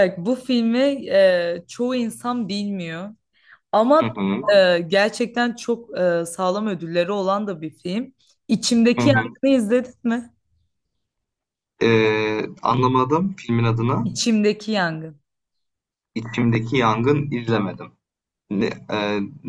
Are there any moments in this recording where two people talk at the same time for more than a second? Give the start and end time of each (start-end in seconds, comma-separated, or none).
none